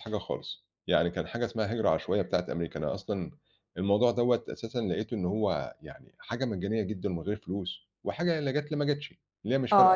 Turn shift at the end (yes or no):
yes